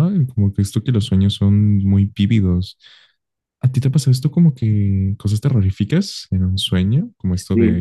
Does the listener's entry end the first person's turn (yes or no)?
no